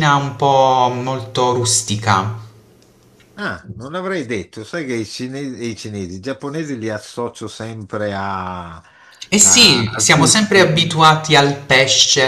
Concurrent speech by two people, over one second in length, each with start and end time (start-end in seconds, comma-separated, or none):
9.3-10.8